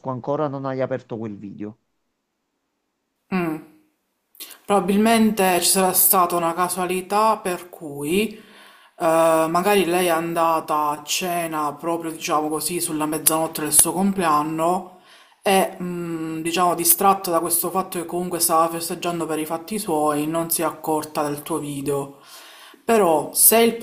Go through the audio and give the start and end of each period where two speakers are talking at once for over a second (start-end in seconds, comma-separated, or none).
none